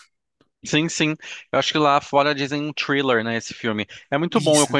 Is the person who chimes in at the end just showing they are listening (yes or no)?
yes